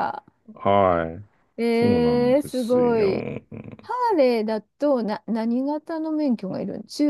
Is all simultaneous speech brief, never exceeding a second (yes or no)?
no